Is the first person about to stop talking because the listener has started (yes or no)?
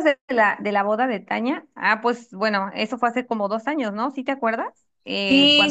yes